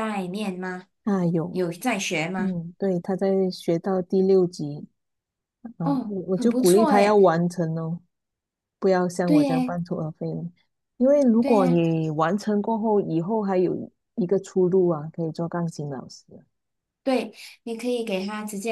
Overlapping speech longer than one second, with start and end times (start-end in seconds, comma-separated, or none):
5.8-7.3